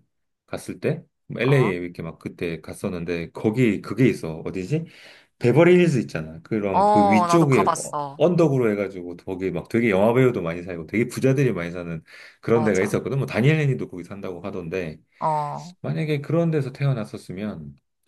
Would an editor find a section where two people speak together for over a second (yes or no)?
yes